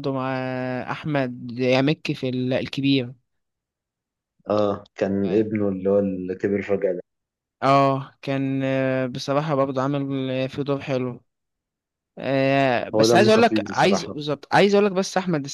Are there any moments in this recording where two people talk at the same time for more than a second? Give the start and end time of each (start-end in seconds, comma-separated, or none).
12.9-14.1